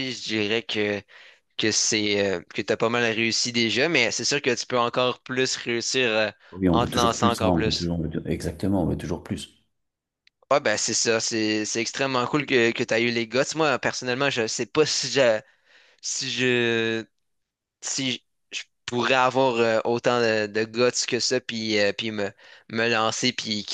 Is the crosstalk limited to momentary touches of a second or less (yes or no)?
no